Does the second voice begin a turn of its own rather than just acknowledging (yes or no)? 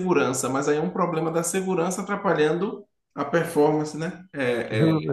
no